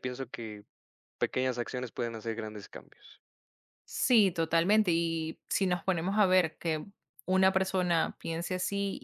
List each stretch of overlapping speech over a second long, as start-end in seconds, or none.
none